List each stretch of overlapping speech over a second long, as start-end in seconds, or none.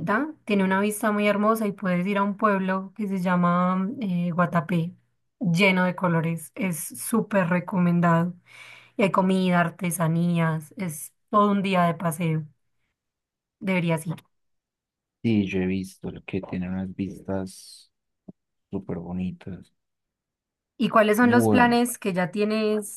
none